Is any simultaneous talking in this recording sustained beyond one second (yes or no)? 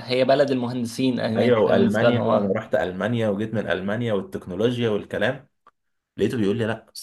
yes